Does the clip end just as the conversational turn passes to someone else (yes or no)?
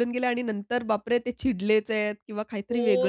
yes